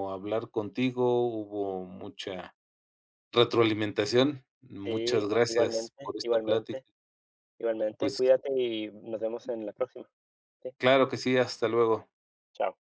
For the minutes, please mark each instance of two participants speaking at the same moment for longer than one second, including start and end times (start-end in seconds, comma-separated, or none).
4.8-6.8